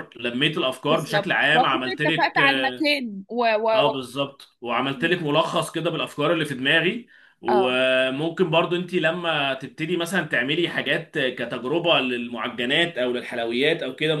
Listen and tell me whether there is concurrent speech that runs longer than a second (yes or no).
yes